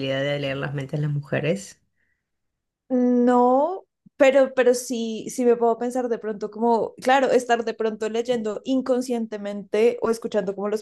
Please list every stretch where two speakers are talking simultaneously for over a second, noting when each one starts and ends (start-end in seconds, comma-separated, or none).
none